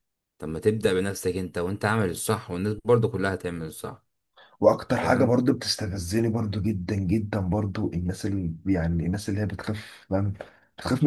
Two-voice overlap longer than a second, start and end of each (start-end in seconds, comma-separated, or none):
none